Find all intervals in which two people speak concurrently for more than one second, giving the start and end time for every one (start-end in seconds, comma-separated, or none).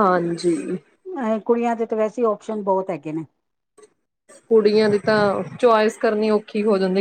none